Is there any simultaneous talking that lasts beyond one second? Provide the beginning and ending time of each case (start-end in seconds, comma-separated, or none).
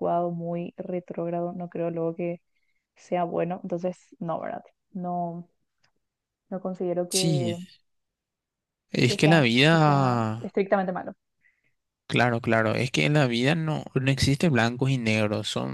9.1-10.5